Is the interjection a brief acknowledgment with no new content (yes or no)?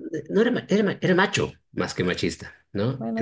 yes